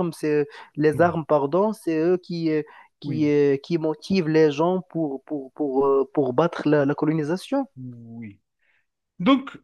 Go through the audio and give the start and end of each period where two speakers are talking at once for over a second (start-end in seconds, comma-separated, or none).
none